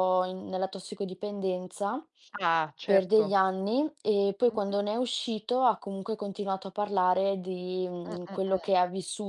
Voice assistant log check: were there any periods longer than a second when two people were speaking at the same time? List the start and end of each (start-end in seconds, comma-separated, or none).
none